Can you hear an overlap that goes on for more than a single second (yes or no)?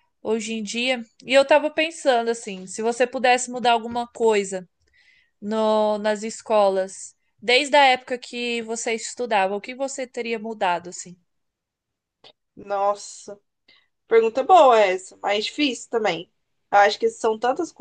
no